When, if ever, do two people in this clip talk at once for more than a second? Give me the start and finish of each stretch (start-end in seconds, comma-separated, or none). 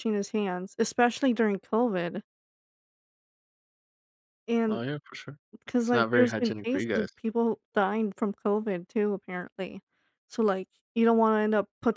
5.8-7.1